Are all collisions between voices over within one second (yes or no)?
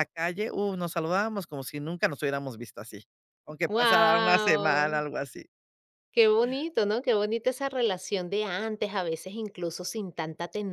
no